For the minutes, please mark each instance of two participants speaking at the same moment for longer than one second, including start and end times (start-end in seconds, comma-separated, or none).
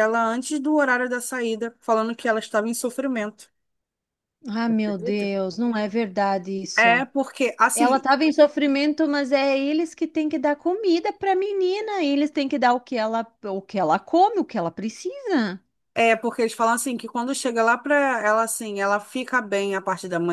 none